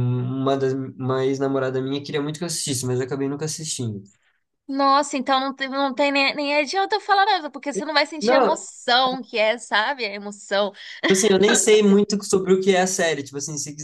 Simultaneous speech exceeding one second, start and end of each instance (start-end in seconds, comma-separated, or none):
none